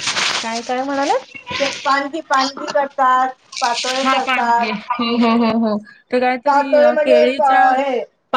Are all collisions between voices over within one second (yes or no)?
yes